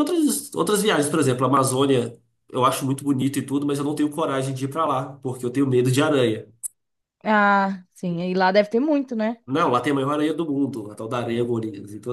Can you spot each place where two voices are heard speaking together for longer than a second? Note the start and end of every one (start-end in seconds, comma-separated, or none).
none